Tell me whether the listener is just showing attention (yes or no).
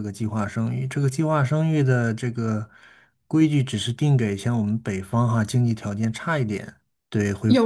no